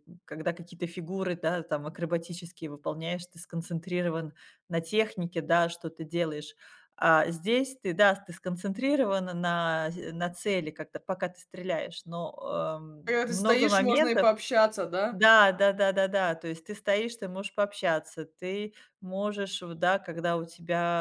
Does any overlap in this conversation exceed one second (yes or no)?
yes